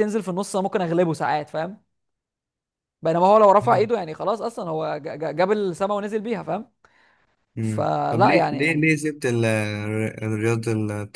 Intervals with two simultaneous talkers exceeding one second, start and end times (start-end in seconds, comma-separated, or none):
7.6-8.9